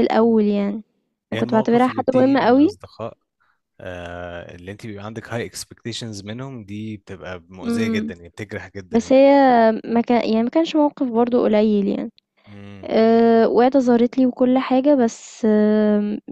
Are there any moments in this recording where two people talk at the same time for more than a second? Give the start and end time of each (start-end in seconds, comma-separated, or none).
1.4-2.8